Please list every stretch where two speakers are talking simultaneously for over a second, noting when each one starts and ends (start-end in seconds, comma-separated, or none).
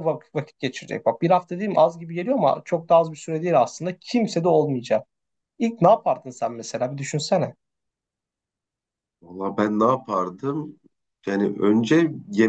none